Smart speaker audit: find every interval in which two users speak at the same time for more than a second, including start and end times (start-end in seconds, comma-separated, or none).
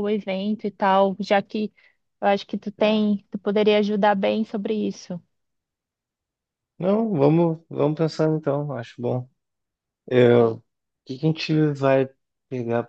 none